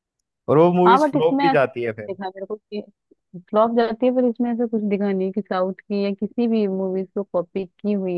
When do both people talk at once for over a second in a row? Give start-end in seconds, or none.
0.8-2.2